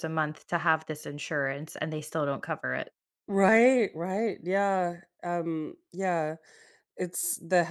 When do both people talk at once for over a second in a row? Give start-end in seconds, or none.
none